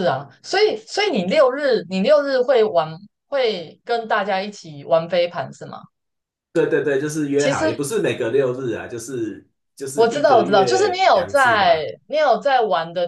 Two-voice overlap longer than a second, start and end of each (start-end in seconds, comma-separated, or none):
9.9-11.8